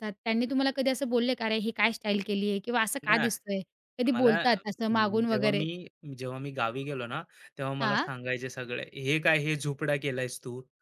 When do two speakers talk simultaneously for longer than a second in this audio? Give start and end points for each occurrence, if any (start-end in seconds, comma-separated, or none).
4.1-5.6